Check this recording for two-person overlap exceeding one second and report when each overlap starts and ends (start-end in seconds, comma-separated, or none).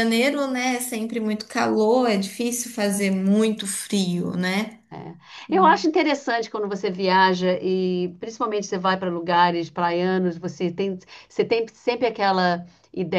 none